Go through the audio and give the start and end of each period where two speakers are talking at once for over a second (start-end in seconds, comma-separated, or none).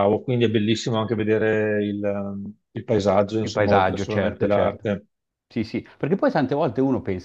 3.4-4.8